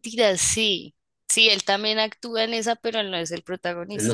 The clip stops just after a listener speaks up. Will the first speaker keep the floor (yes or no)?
no